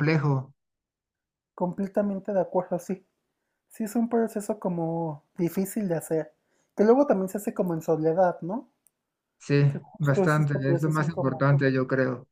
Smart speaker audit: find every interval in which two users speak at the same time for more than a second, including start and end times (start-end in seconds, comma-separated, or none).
9.7-11.4